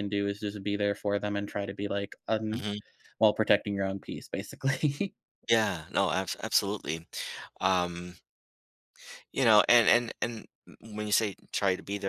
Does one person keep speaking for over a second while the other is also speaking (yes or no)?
no